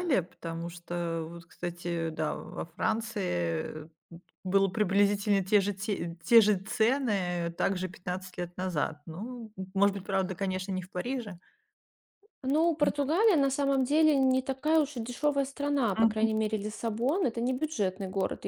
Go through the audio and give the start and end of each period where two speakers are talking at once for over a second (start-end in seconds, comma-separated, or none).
none